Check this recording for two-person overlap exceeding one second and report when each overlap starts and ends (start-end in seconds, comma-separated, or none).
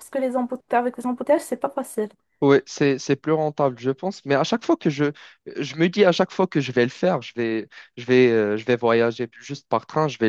none